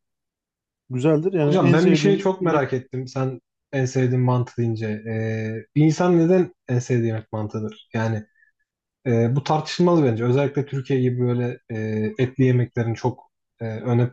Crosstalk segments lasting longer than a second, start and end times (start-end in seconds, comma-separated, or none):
1.4-2.6